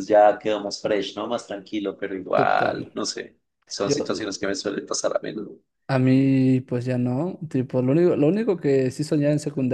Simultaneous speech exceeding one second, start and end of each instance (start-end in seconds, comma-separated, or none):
none